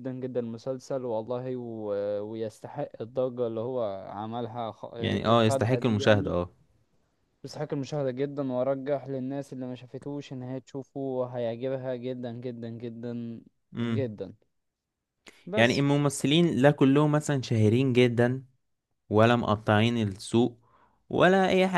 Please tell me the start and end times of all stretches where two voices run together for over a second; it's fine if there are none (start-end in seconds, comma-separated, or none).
5.0-6.3